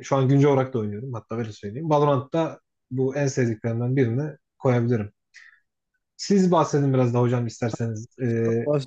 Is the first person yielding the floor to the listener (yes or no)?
no